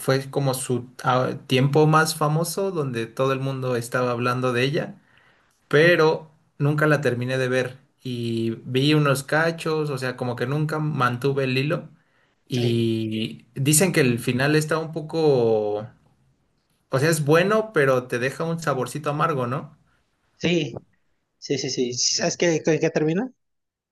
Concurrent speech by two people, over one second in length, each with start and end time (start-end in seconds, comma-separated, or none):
none